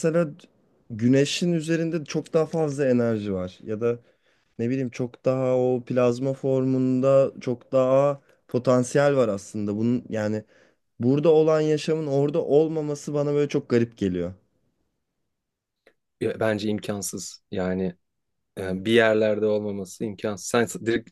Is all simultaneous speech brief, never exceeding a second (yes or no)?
yes